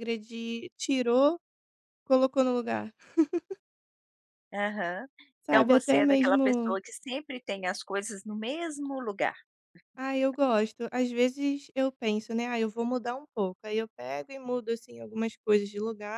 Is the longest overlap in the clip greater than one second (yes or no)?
yes